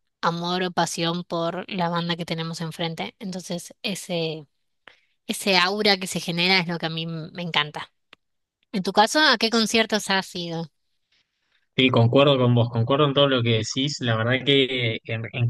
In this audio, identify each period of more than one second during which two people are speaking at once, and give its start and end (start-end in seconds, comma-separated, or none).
none